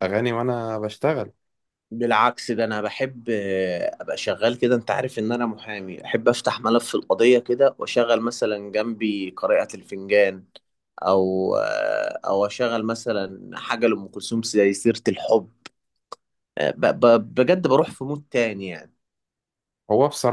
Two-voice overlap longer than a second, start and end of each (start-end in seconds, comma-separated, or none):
none